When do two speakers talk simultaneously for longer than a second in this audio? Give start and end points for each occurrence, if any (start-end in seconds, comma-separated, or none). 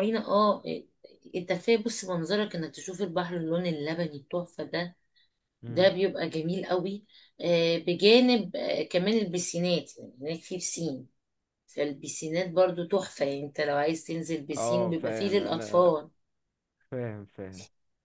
14.6-15.9